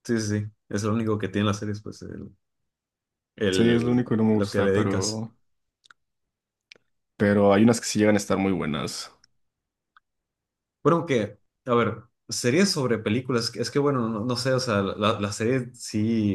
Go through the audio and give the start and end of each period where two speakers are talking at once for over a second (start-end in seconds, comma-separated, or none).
3.5-5.2